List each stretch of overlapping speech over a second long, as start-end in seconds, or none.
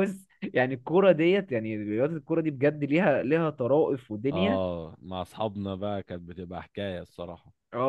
none